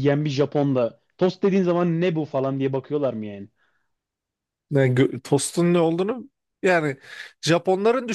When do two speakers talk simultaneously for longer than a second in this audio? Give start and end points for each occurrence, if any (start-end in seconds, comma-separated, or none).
none